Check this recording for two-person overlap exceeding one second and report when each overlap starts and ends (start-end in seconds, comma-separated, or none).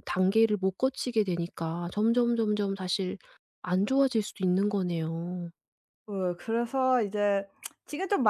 none